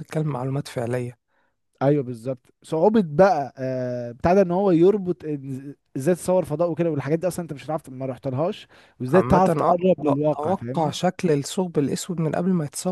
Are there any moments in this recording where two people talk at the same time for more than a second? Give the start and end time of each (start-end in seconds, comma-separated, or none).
9.1-11.0